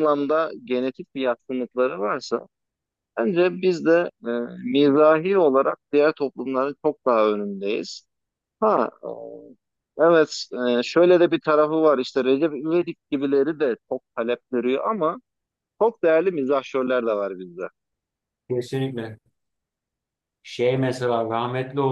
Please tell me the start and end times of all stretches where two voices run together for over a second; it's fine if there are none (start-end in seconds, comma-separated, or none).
none